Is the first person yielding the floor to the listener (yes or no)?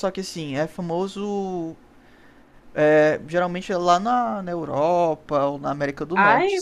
yes